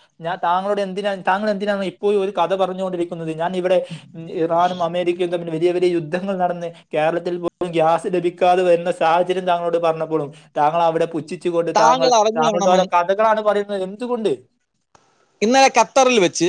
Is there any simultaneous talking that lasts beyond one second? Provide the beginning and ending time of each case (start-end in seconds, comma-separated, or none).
none